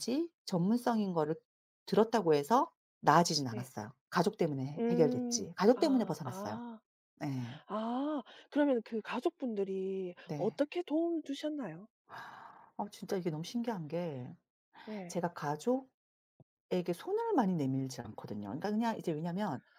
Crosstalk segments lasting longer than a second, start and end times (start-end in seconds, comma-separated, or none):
4.8-6.6